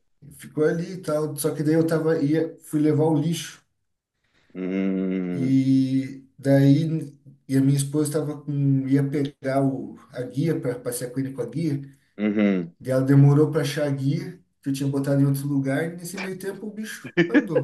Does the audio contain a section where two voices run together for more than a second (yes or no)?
no